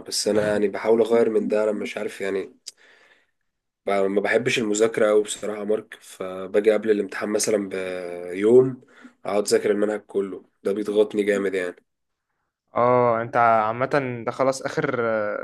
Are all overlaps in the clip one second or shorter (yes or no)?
yes